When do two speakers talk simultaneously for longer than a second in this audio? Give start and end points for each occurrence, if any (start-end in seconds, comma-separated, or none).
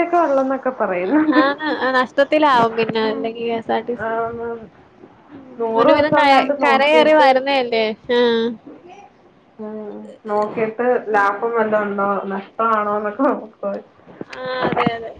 2.6-4.2